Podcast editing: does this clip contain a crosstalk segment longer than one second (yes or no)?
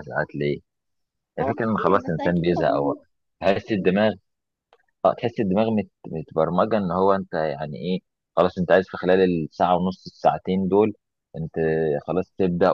yes